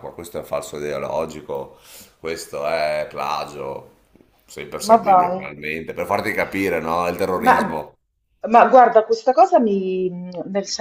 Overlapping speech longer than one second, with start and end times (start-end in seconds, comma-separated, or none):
none